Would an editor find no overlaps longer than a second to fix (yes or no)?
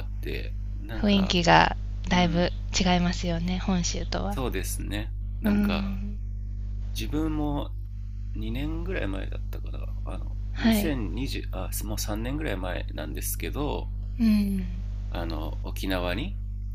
yes